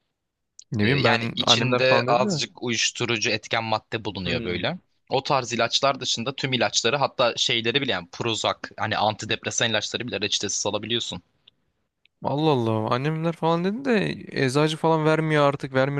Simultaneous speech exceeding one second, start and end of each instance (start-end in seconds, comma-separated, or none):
0.8-2.4